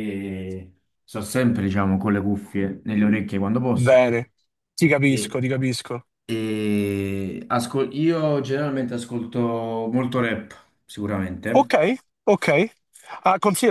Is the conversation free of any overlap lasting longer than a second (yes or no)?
yes